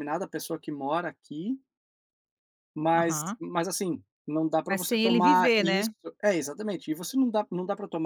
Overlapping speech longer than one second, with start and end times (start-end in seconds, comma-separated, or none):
4.7-5.9